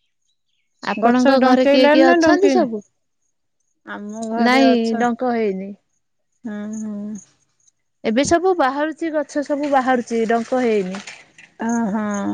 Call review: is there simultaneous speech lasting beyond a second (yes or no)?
yes